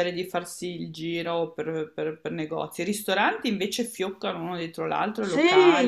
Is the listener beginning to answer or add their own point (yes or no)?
yes